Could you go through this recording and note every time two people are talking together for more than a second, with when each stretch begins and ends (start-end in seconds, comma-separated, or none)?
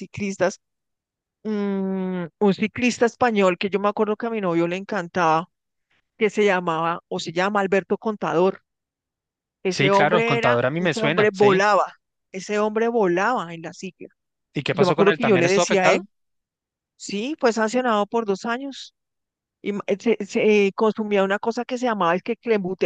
9.7-11.6, 14.7-16.0